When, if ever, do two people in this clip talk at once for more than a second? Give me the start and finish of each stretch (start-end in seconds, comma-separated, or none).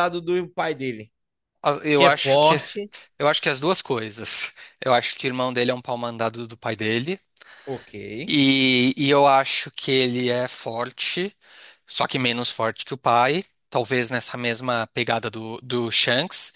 none